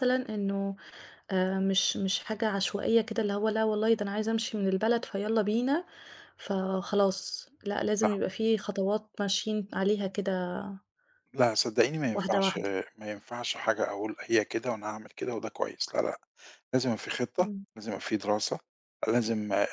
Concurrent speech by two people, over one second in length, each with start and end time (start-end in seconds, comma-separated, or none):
none